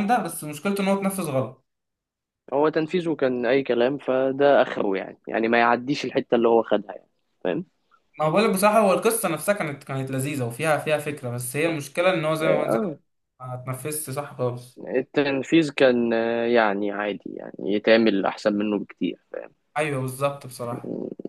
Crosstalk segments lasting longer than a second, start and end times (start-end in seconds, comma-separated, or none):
none